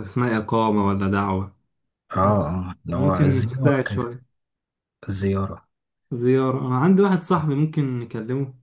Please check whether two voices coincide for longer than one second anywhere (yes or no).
yes